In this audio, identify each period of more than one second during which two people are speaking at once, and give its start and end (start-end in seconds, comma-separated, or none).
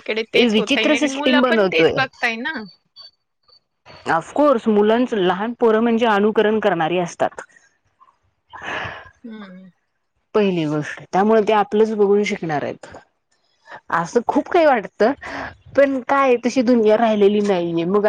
0.5-1.9